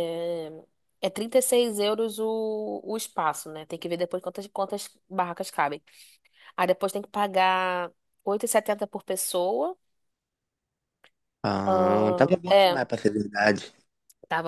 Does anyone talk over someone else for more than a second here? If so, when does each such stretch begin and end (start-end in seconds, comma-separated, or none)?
11.6-12.8